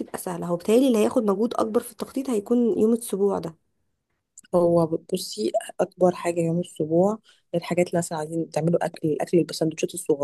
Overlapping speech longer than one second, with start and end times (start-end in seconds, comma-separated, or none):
none